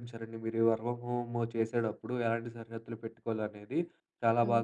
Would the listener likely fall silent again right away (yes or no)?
yes